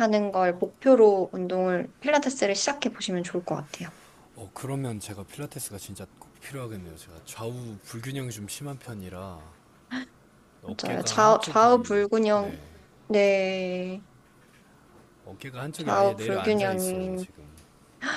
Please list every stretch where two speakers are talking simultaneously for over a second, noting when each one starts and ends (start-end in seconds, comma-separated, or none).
10.6-12.6, 15.8-17.2